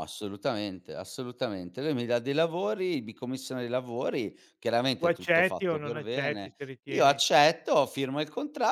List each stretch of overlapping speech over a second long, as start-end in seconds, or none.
5.0-7.2